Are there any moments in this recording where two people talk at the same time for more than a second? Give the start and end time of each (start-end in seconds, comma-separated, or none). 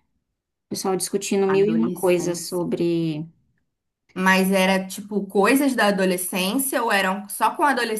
1.5-2.7